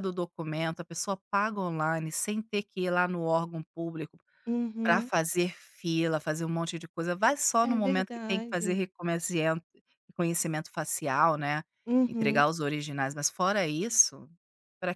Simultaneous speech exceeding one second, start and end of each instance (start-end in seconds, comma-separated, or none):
7.6-8.8